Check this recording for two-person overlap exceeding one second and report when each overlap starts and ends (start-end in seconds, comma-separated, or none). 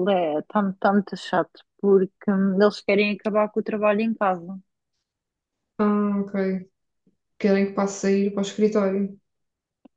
none